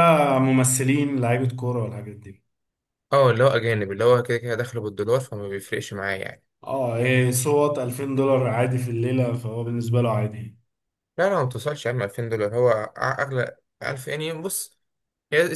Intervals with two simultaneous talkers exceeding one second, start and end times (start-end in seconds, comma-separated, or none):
none